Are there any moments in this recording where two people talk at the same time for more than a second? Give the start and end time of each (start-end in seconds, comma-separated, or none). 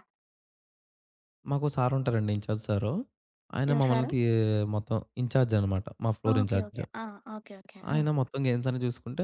none